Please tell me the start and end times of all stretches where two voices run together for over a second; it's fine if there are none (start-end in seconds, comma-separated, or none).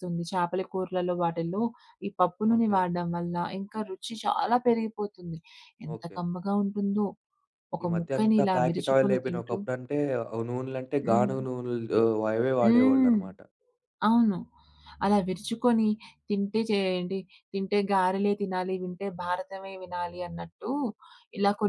7.8-9.6